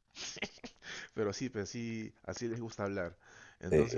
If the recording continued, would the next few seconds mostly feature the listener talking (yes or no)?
no